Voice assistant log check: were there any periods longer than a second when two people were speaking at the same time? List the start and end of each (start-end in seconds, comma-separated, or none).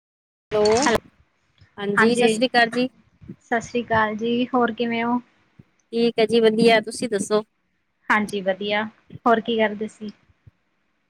none